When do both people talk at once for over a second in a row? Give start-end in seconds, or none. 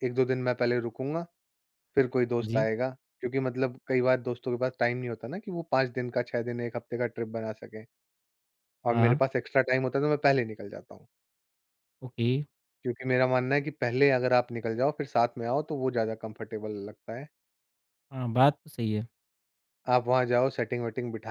none